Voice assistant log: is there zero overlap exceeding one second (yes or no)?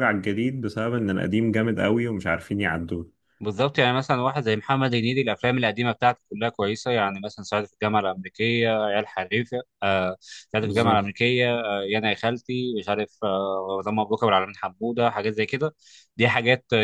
yes